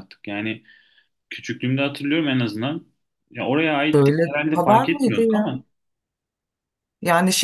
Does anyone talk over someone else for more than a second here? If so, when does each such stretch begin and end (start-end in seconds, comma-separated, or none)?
3.9-5.5